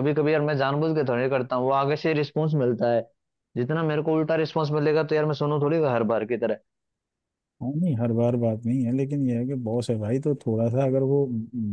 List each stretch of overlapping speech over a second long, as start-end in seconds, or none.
none